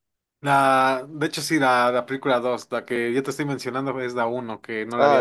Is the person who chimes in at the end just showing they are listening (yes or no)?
no